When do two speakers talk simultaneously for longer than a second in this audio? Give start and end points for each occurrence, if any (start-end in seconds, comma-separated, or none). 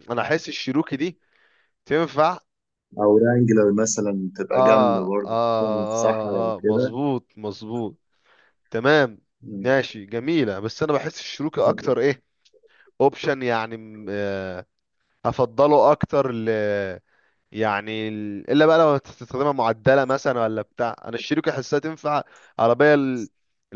4.5-6.9